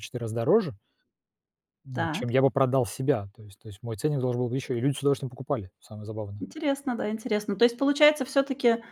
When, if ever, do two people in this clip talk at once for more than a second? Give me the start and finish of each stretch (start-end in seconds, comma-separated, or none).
none